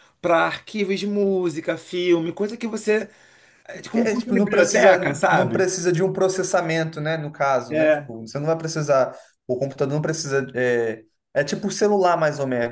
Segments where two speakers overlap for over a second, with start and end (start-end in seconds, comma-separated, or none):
3.9-5.7